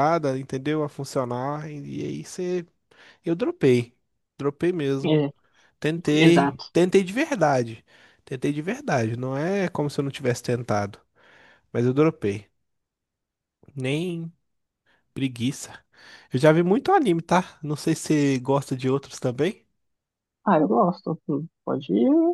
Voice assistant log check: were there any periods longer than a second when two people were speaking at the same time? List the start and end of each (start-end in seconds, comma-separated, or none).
none